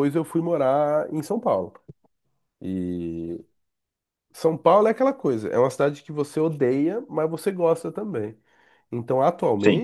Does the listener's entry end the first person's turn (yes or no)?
no